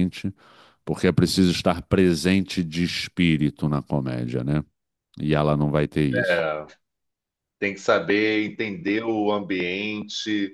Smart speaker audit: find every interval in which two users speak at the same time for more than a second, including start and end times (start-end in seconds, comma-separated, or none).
none